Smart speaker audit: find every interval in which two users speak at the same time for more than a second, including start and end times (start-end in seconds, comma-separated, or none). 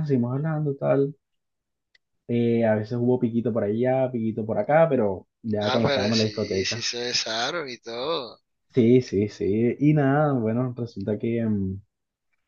5.6-6.9